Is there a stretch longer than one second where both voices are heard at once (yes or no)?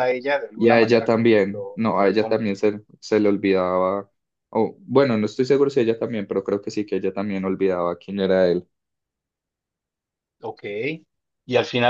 yes